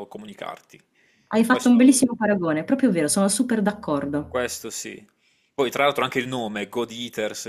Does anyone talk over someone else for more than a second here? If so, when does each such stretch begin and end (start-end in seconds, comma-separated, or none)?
none